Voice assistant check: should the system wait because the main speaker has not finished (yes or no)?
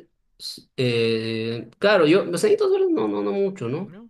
yes